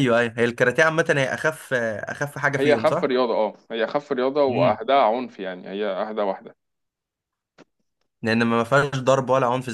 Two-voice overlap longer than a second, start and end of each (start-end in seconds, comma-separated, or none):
none